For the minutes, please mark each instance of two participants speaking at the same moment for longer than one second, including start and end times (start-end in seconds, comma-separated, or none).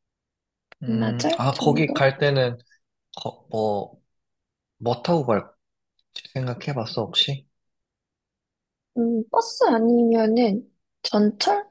0.9-2.2